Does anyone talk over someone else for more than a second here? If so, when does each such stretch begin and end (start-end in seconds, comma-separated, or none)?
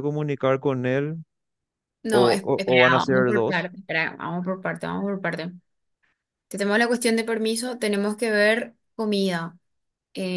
2.1-3.7